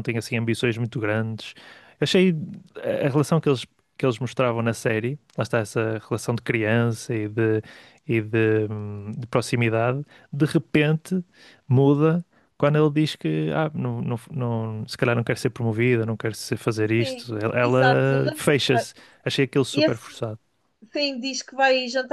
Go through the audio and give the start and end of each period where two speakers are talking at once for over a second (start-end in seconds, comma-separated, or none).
17.0-18.4